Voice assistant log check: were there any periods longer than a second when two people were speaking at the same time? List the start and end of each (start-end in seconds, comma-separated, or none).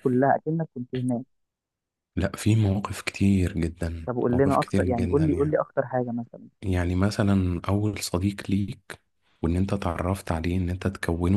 4.0-5.6